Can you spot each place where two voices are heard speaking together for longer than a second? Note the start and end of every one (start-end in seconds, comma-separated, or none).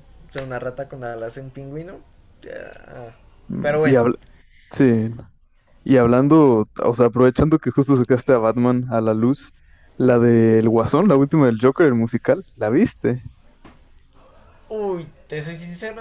none